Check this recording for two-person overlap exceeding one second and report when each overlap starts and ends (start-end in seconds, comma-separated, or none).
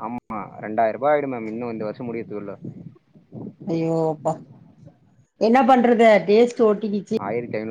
none